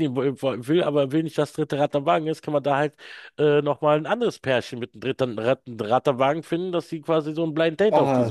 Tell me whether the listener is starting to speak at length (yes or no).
yes